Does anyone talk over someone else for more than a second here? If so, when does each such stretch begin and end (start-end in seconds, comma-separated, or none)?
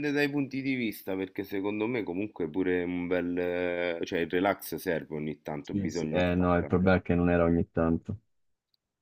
5.6-6.8